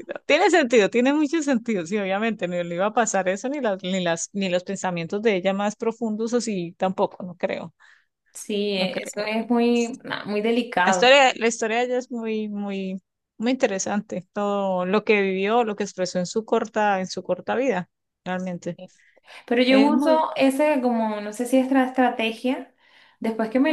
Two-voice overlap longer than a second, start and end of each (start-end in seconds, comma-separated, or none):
none